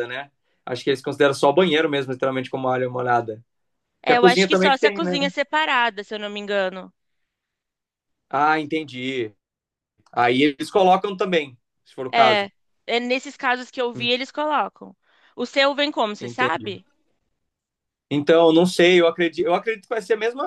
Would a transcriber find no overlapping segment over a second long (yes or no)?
no